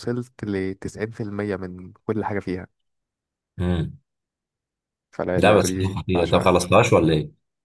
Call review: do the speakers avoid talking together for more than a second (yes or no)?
no